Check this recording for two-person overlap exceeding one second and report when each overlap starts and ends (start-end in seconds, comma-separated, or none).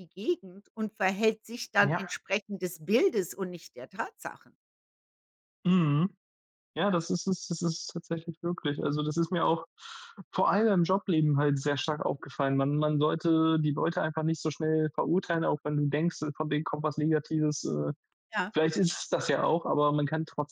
none